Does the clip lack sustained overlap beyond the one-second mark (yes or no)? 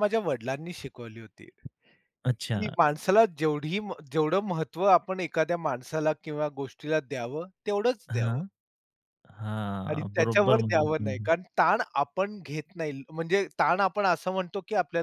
no